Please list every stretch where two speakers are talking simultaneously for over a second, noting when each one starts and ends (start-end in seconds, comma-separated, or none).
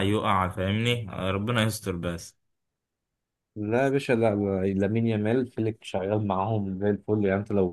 none